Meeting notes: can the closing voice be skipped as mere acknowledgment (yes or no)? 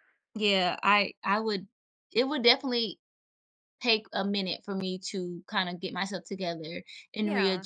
yes